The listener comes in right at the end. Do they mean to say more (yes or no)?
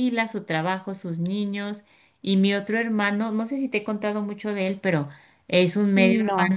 no